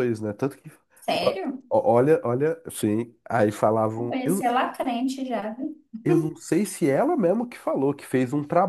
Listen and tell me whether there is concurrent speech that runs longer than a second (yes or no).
no